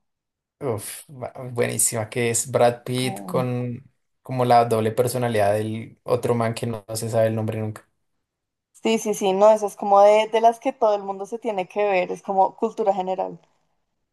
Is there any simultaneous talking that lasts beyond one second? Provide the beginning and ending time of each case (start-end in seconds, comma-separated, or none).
none